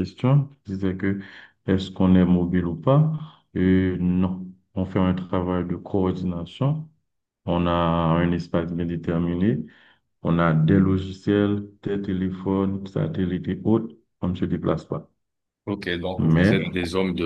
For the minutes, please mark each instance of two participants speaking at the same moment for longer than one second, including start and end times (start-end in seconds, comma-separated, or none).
none